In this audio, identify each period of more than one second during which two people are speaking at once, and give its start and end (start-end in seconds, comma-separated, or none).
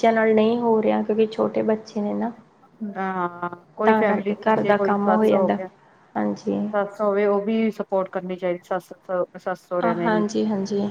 3.9-5.6